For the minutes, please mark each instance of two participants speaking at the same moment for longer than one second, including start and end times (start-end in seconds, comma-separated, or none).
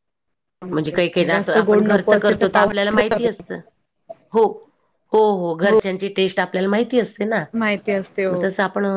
1.3-2.7